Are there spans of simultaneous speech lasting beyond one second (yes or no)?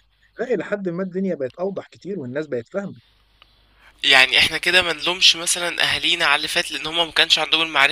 no